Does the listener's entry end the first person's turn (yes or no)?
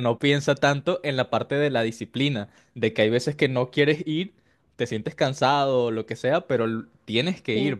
no